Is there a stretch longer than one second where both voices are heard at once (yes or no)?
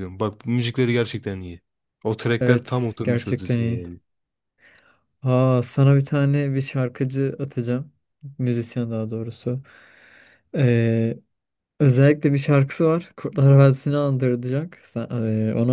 yes